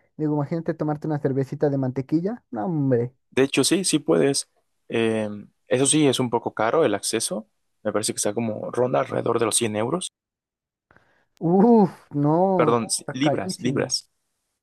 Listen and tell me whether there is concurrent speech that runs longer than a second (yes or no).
yes